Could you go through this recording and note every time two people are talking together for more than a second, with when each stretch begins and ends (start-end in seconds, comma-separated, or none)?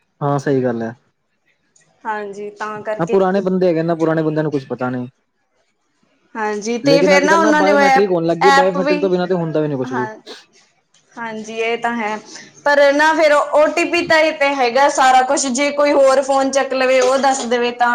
6.9-9.0